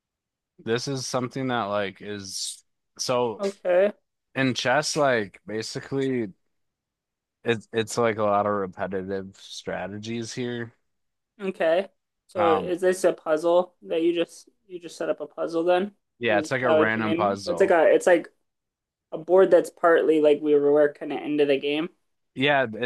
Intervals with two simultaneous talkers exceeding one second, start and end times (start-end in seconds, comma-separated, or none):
16.2-17.8